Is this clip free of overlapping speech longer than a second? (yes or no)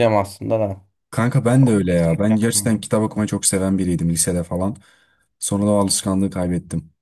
no